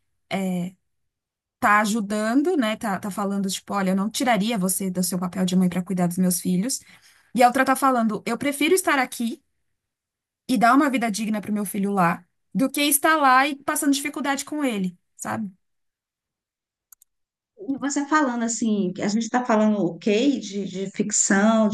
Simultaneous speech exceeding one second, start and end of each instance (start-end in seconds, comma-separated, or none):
none